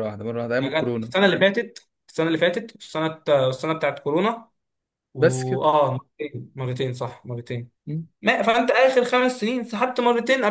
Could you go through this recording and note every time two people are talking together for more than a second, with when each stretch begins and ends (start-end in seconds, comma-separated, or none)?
none